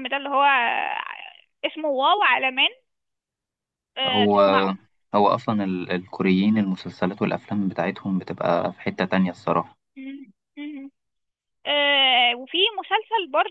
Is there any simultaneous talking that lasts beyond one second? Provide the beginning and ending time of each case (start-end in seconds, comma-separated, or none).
none